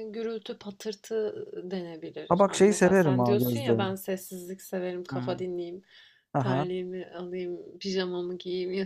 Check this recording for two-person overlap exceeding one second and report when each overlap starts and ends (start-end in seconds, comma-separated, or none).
2.3-3.7